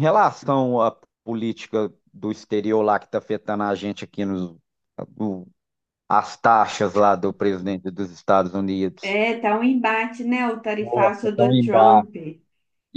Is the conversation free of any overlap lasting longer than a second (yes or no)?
no